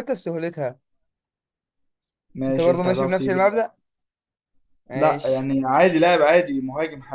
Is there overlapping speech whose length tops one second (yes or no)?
yes